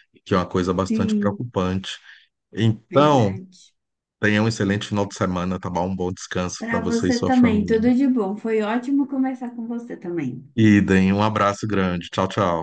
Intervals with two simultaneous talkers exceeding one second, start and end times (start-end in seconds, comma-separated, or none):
6.6-7.9